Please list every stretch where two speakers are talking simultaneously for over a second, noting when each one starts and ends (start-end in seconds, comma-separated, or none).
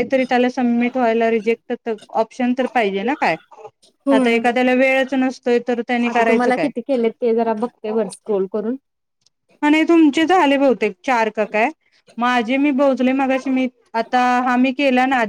none